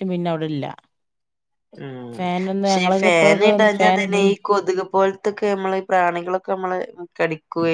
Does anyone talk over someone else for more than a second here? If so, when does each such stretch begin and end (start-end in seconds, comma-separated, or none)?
2.2-4.2